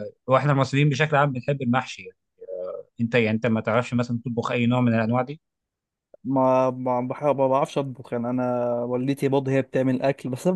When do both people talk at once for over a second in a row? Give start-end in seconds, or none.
none